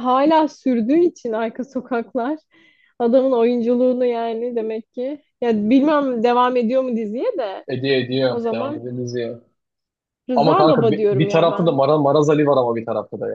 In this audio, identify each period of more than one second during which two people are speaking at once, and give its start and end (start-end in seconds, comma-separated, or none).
10.3-11.8